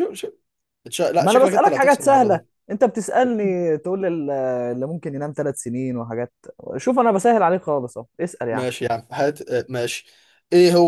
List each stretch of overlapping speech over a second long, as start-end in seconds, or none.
1.2-2.5